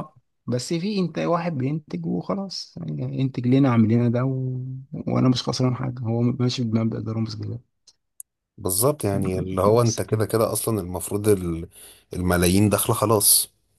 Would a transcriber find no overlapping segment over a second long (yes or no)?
yes